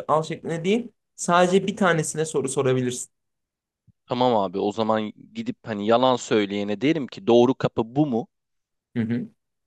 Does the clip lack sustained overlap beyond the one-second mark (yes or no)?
yes